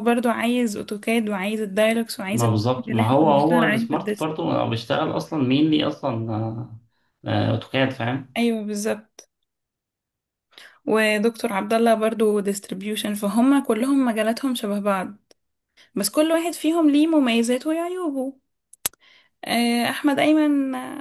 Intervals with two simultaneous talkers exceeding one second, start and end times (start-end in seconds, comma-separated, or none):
2.3-4.3